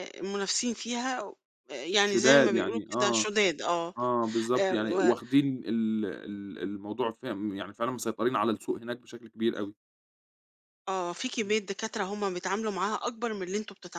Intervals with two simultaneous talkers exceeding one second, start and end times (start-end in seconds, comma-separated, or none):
1.9-3.3